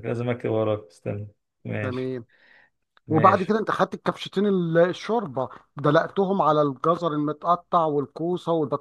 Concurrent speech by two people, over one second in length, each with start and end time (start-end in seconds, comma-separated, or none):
none